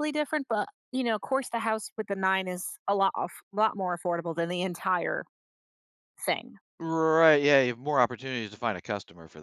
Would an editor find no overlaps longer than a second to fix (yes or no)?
yes